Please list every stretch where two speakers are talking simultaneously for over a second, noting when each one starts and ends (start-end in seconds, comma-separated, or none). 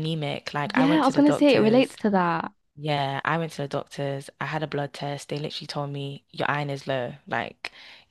0.7-1.9